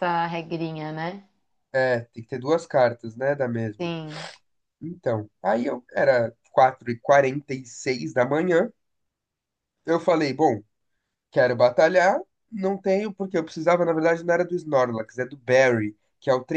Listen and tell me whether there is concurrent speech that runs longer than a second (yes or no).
no